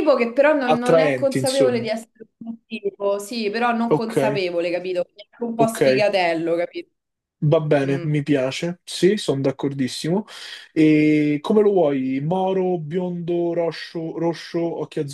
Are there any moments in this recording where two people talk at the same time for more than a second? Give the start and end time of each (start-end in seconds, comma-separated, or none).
0.6-1.9